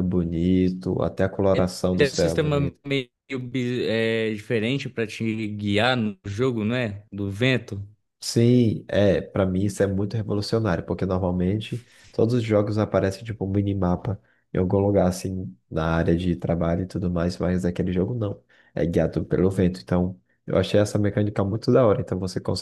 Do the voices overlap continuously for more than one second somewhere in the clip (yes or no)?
yes